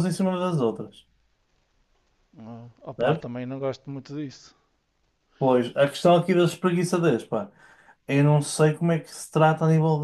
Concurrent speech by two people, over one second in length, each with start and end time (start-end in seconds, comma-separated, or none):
none